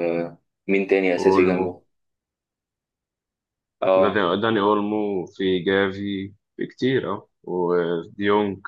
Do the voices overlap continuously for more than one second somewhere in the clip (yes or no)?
no